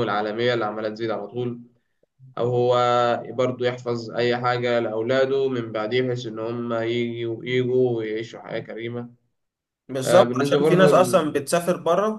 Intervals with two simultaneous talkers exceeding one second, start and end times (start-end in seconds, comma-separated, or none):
10.1-11.4